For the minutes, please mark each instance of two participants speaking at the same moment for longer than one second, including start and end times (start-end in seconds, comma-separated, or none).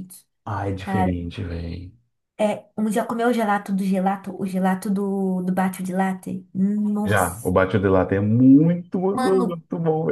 none